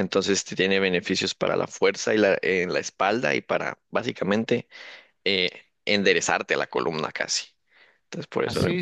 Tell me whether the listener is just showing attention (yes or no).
no